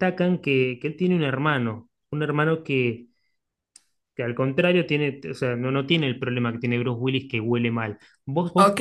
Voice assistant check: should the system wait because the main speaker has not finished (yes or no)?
no